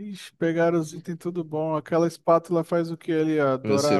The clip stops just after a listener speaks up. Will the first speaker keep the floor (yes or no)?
no